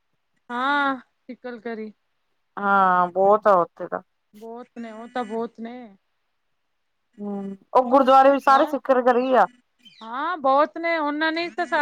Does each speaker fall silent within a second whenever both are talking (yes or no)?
yes